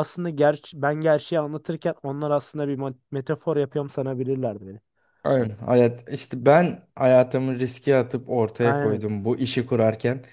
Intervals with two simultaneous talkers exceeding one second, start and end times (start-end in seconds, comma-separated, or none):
none